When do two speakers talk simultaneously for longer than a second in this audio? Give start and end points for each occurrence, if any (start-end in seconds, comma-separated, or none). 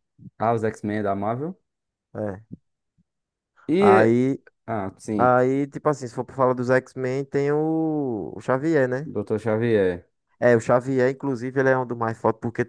none